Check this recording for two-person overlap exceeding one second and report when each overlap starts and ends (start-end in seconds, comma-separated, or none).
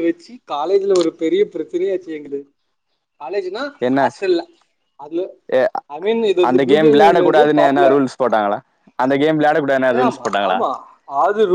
6.5-8.0